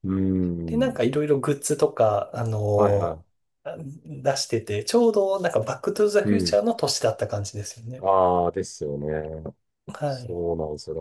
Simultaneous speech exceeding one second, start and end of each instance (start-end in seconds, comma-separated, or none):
none